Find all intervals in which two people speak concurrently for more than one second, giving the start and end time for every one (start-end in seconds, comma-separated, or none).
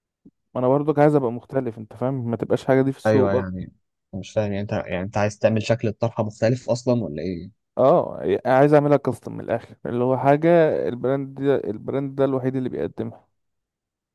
none